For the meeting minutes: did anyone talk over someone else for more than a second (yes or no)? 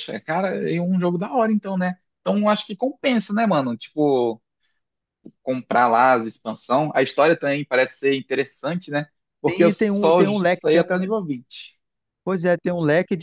yes